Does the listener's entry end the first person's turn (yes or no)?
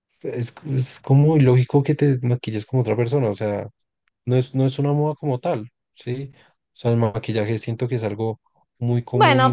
yes